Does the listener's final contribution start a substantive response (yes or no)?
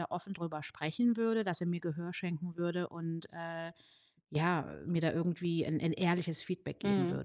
yes